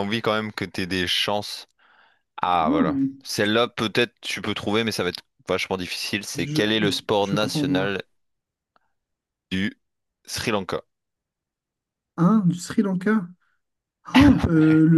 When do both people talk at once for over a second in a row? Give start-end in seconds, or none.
6.3-7.9